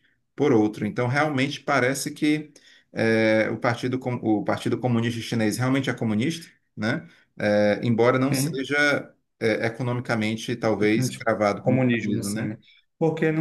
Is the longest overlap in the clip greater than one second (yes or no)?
yes